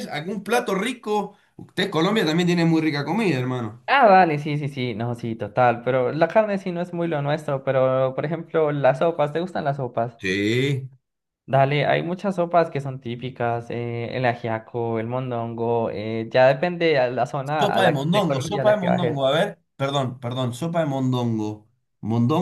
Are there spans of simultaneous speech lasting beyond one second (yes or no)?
yes